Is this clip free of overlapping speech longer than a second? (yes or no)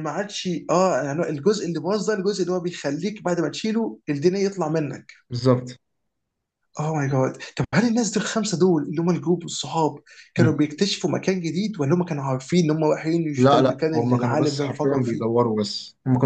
no